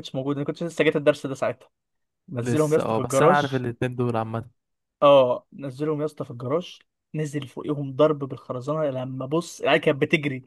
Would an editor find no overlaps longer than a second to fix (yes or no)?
no